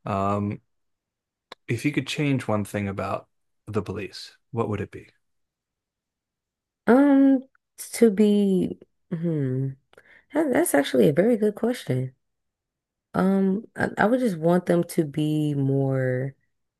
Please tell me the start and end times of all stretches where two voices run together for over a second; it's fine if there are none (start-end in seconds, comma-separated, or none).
none